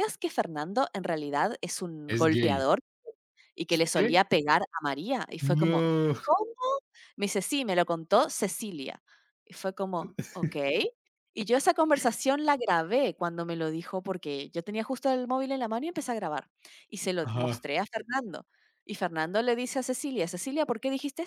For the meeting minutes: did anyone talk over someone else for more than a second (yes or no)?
no